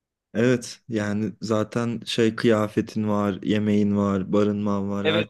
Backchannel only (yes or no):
no